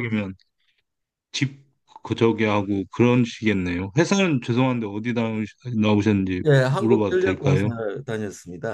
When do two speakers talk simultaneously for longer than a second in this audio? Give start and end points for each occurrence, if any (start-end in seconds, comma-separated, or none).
6.4-7.6